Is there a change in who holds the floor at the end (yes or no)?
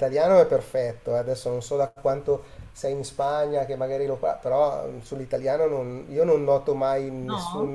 no